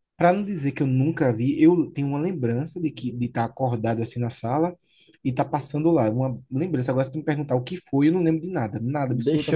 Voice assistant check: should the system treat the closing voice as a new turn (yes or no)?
yes